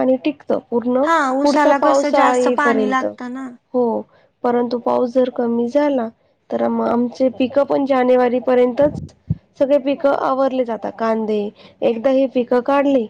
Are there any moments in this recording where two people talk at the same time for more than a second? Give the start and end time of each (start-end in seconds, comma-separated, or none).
1.4-3.0